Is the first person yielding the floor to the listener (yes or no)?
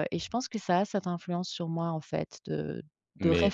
no